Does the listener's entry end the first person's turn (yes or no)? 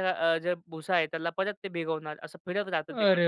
yes